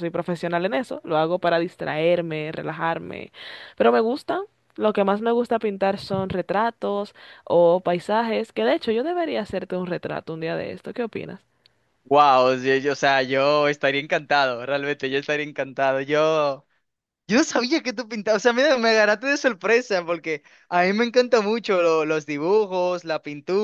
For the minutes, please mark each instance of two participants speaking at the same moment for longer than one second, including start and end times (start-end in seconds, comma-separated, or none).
none